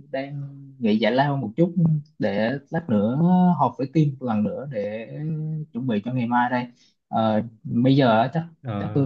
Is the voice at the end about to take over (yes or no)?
no